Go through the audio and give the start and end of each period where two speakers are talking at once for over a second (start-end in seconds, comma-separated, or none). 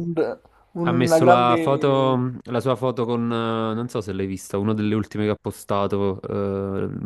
0.8-2.1